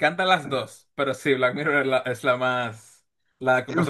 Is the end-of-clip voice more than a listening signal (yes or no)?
yes